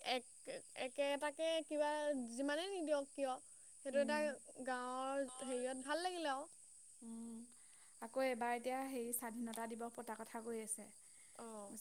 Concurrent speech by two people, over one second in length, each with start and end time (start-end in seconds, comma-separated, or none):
none